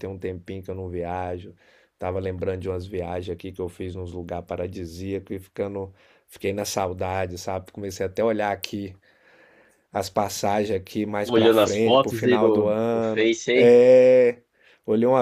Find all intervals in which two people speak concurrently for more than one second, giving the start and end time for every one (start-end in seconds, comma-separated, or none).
11.2-13.8